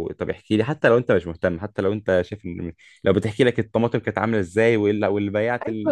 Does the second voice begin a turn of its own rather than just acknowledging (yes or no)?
no